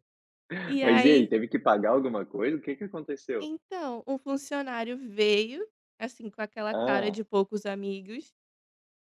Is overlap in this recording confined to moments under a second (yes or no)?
yes